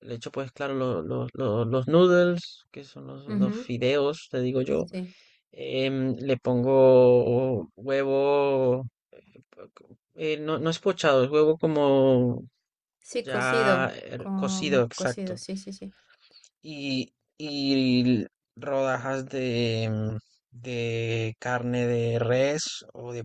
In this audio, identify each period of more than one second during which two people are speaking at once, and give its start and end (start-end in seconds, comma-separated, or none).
13.2-15.4